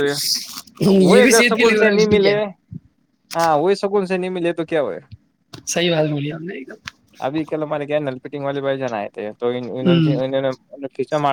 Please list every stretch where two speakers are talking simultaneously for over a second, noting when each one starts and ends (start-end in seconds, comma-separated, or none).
1.0-2.4